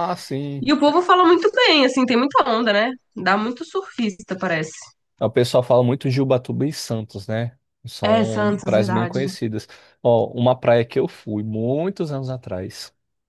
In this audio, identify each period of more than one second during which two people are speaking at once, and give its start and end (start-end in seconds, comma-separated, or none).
8.0-9.2